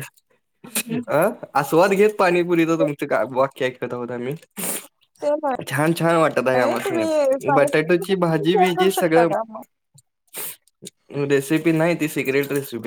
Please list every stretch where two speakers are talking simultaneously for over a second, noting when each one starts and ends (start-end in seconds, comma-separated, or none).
6.4-9.3